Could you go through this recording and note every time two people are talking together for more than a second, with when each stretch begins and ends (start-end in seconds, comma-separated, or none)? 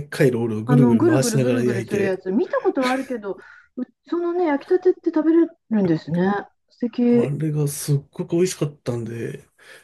0.7-2.2